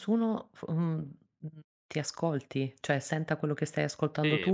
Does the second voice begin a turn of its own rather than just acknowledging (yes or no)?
yes